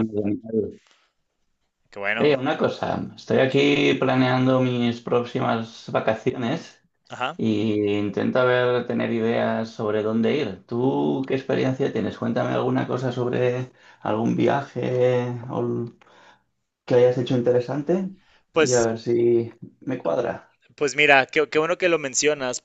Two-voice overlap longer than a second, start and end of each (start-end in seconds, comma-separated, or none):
none